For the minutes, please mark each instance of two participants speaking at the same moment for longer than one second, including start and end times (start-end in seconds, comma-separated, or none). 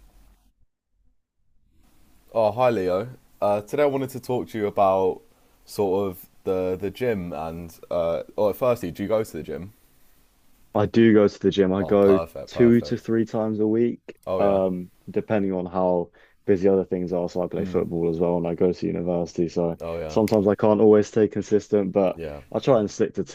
11.8-13.1